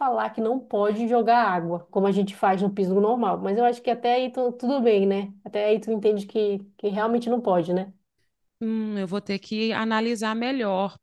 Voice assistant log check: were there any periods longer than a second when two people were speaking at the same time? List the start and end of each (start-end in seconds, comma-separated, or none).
none